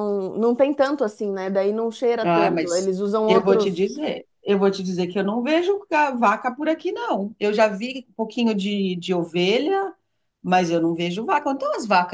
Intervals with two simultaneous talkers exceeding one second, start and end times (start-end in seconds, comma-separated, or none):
2.2-3.9